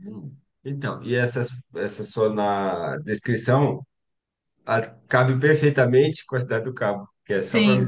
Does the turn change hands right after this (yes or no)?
no